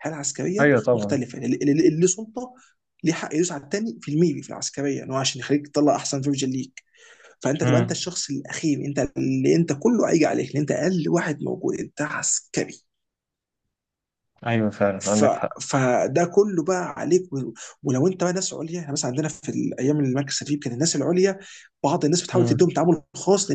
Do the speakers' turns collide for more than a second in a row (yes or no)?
no